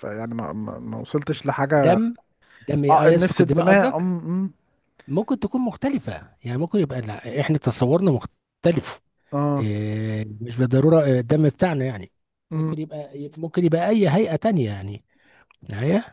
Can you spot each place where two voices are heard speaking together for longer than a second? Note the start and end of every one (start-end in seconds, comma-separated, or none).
2.9-4.1